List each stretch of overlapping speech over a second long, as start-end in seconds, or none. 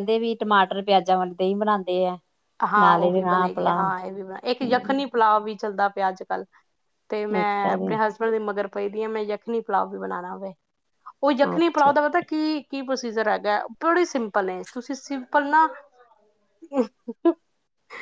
none